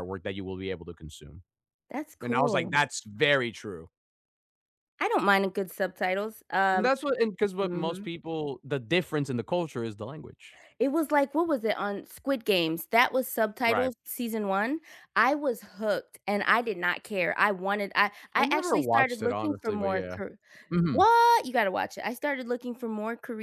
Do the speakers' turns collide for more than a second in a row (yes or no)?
yes